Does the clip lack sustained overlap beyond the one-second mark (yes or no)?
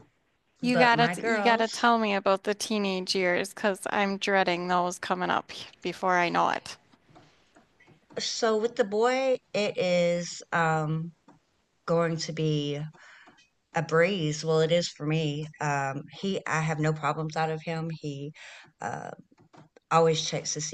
no